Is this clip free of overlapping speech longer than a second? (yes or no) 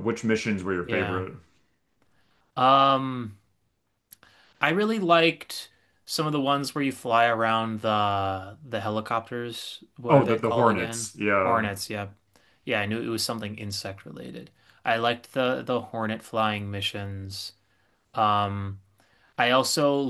no